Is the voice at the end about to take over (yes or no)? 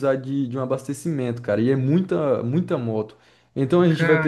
no